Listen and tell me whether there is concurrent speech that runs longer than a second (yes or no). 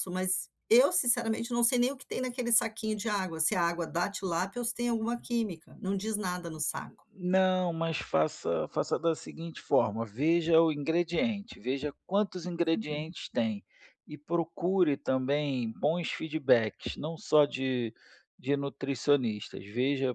no